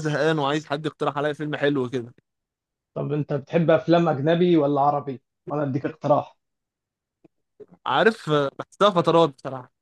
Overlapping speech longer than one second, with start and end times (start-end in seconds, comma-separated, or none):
none